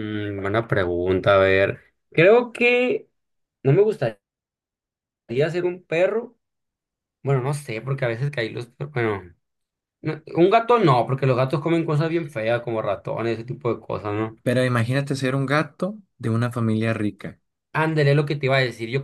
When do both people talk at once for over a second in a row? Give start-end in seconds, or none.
none